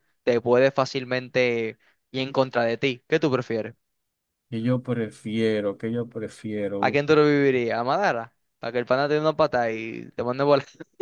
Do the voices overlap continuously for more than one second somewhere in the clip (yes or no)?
no